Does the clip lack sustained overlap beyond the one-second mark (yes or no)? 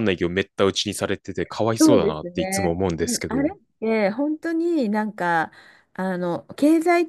no